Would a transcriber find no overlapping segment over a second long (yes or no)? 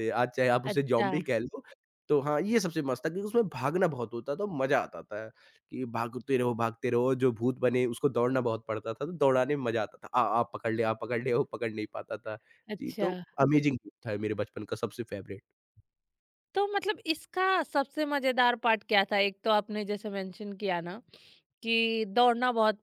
yes